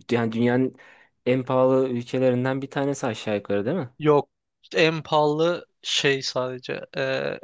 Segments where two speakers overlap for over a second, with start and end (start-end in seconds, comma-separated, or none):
none